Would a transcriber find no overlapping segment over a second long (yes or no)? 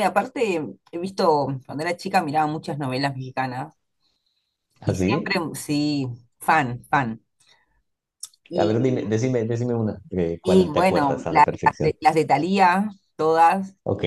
no